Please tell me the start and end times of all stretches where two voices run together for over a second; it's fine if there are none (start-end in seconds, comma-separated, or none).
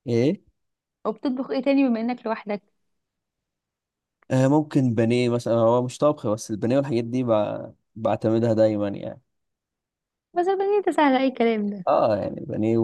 none